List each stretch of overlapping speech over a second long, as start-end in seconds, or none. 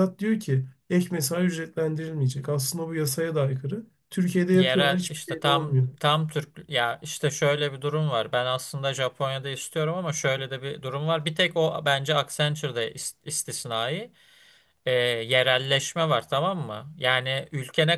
4.5-5.9